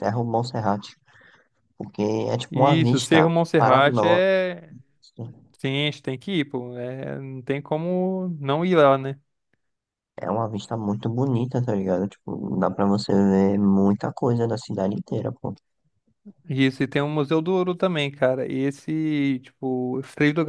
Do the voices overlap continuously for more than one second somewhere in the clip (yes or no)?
yes